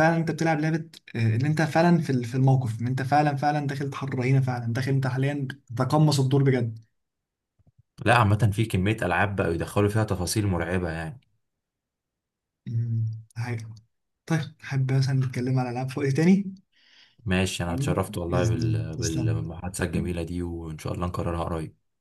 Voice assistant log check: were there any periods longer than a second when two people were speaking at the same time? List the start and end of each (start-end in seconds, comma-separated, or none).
17.7-19.4